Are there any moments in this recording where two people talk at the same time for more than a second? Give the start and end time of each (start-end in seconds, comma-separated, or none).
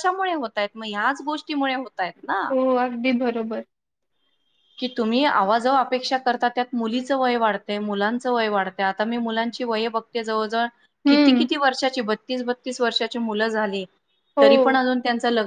none